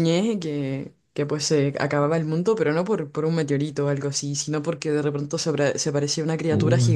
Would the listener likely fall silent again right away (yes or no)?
yes